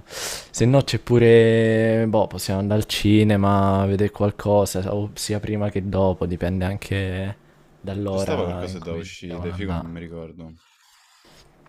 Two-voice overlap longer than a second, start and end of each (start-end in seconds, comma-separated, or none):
8.1-10.0